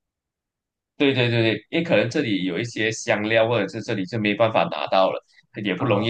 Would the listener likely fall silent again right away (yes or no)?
yes